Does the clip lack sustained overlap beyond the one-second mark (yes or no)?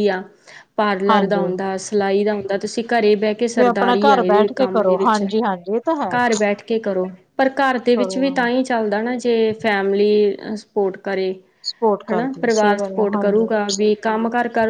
no